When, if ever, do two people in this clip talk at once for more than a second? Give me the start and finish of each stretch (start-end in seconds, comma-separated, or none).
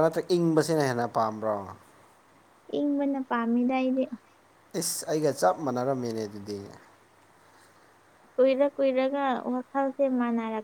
none